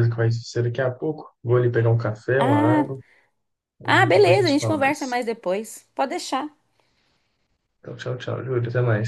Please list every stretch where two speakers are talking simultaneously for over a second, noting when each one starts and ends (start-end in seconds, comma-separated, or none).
3.9-5.2